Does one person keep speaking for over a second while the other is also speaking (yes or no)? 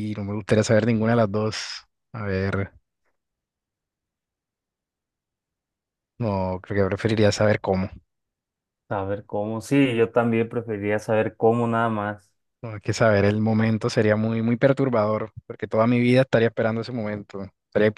no